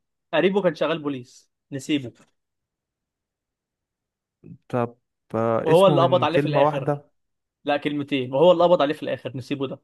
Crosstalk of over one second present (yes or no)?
yes